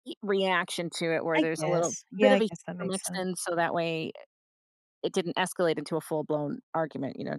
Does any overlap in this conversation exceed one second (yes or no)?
yes